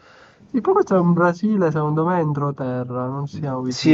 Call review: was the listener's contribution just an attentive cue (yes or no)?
no